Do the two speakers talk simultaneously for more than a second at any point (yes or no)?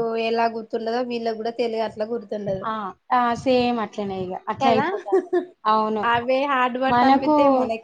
no